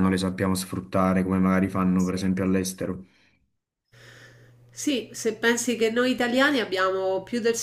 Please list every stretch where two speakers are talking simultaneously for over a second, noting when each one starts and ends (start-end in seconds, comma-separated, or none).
none